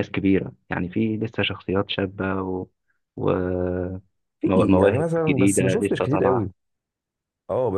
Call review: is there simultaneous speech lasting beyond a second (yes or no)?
yes